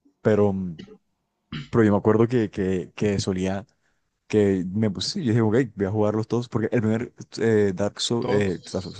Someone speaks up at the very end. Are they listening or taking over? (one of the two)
listening